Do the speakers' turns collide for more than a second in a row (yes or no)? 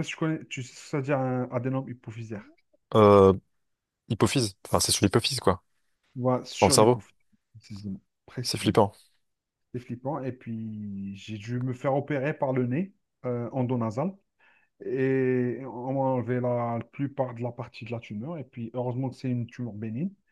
no